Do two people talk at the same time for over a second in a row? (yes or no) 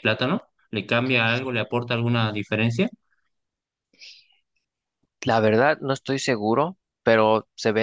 no